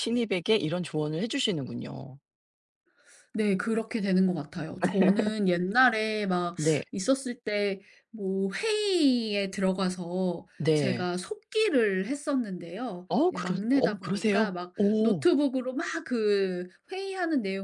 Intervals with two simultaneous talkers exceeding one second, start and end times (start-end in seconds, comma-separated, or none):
13.1-15.2